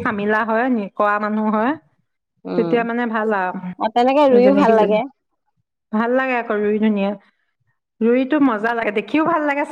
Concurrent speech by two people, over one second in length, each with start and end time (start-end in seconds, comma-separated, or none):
none